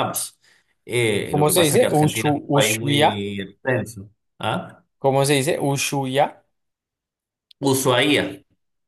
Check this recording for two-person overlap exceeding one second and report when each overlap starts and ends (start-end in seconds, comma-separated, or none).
1.3-3.3